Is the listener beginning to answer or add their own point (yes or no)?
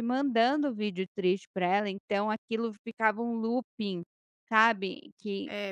yes